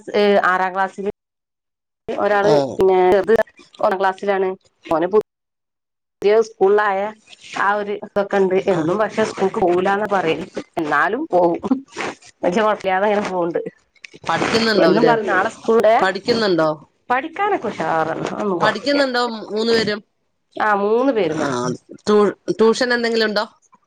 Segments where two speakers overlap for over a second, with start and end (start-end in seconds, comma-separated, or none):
none